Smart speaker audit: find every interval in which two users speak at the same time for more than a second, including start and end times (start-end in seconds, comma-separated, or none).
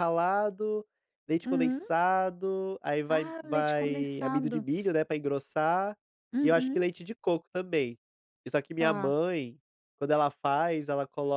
3.1-4.6